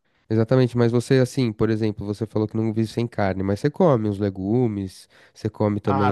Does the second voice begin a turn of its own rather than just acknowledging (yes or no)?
yes